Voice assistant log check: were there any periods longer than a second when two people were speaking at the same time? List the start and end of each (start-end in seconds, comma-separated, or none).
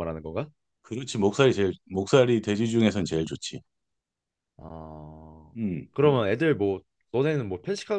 none